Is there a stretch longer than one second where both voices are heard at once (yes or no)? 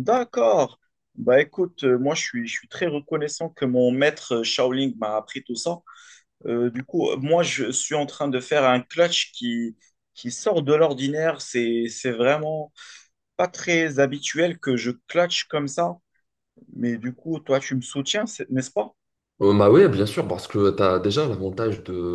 no